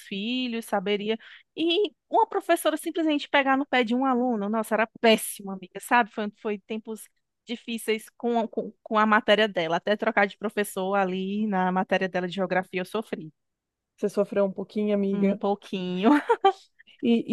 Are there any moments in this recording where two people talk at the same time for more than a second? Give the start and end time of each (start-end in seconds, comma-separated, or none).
none